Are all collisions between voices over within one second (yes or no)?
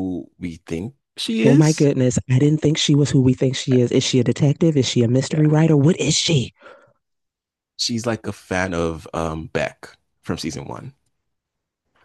yes